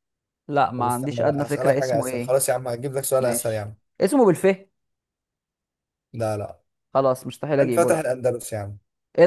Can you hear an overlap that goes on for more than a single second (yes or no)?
yes